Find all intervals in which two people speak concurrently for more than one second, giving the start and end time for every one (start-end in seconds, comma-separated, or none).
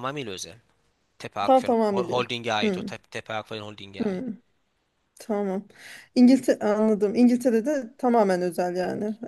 1.5-3.0